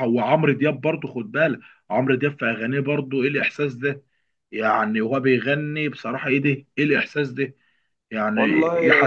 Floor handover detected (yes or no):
no